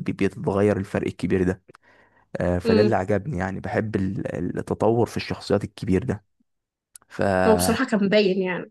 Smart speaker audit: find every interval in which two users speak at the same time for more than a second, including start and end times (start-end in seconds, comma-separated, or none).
none